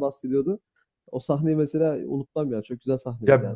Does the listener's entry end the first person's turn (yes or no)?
yes